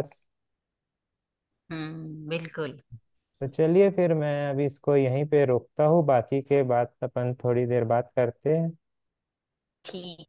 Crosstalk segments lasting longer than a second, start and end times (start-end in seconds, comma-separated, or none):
none